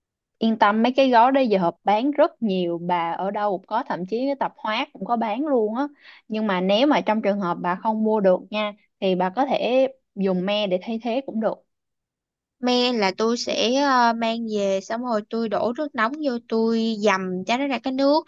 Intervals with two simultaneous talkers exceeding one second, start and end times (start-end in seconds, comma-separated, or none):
none